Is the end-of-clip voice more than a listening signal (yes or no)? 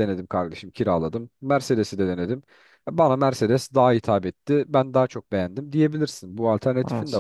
yes